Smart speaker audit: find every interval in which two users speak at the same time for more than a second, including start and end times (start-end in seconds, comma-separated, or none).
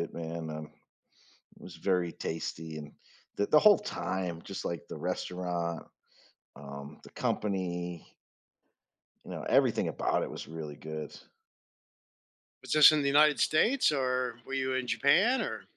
none